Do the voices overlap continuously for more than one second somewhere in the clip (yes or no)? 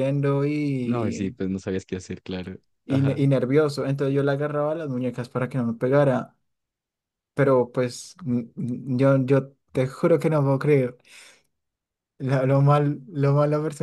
no